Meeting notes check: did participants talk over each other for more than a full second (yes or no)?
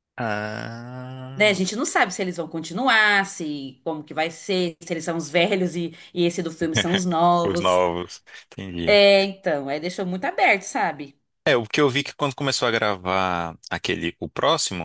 no